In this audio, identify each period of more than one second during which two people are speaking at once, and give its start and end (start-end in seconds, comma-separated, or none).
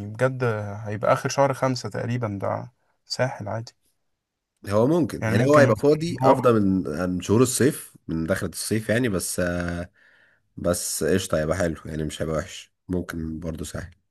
5.2-6.5